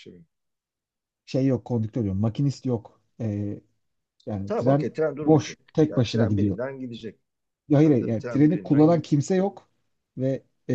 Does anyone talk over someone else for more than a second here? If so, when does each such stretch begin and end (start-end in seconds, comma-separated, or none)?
4.5-6.6, 7.8-9.1